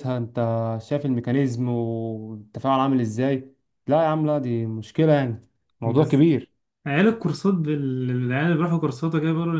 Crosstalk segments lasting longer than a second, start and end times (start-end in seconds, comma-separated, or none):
none